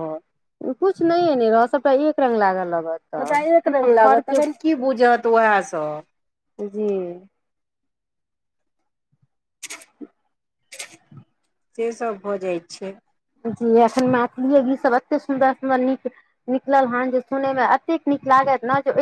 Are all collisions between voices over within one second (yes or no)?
yes